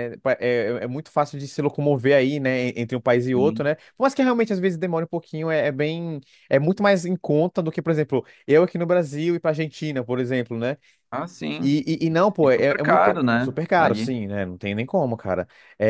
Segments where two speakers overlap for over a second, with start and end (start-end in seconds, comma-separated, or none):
12.4-14.1